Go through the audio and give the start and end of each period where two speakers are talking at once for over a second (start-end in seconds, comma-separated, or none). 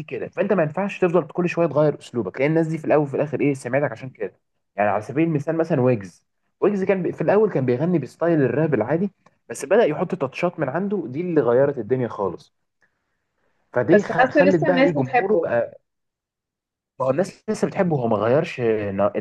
13.9-15.5